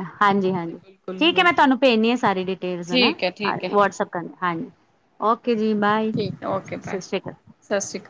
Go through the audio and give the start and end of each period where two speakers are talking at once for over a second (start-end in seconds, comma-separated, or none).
none